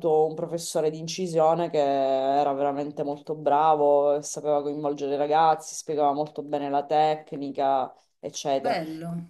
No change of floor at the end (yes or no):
no